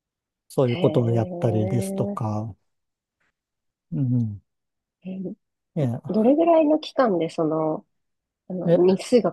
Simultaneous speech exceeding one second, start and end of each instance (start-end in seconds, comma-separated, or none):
0.7-2.2